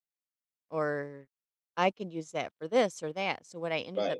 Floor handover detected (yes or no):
yes